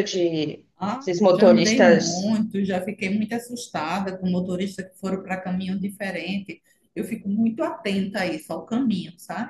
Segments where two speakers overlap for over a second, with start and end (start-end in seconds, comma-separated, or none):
0.8-2.4